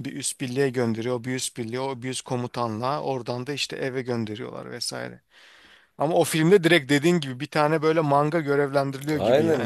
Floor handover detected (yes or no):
yes